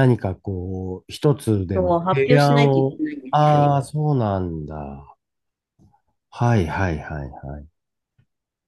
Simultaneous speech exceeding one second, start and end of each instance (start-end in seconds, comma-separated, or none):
1.8-3.8